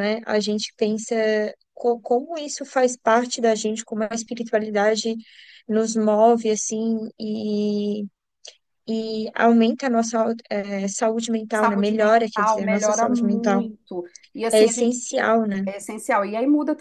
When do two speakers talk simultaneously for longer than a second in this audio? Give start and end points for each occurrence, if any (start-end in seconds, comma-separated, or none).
11.5-13.6